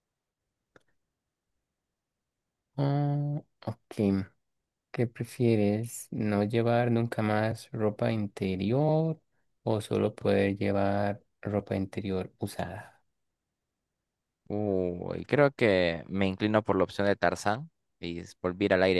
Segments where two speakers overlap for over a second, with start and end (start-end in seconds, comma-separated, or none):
none